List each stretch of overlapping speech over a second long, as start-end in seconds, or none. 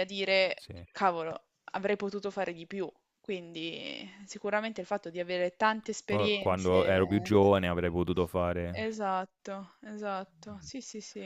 6.1-7.4